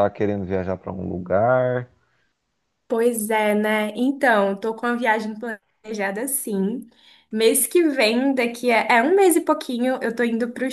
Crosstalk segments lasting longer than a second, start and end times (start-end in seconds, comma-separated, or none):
none